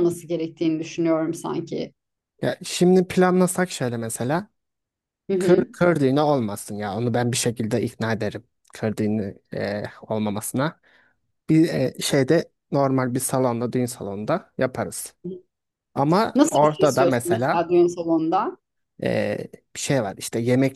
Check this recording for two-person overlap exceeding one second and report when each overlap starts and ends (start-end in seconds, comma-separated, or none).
16.4-17.7